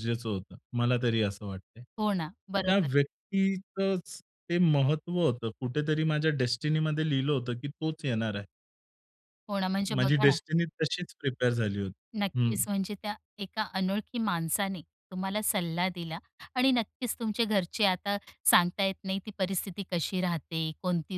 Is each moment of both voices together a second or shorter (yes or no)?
yes